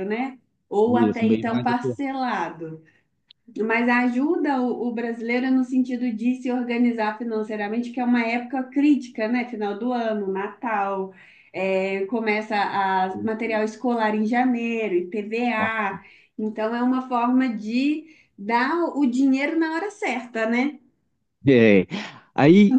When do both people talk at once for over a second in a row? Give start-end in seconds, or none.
0.9-2.2